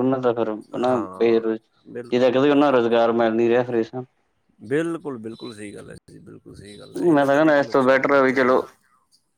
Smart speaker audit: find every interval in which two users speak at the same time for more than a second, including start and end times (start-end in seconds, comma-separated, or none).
6.8-8.6